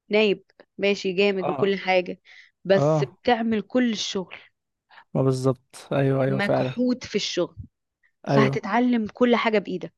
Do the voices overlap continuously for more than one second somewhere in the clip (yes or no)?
no